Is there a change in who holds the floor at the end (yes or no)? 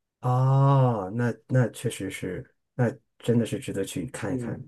yes